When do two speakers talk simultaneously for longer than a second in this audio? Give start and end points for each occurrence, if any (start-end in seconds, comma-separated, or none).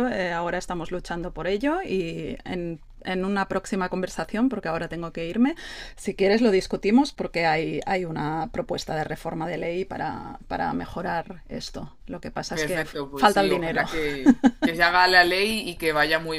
12.5-13.8